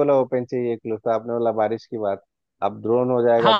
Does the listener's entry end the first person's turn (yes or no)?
yes